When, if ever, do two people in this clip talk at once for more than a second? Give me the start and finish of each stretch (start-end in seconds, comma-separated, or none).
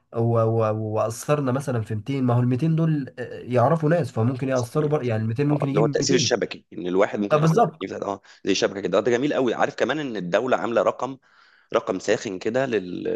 4.5-6.3